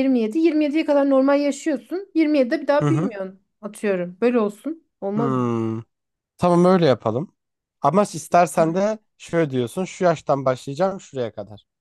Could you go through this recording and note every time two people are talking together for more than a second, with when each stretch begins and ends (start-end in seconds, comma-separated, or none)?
none